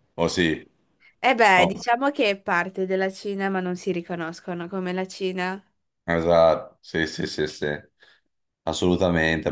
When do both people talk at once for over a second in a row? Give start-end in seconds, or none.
none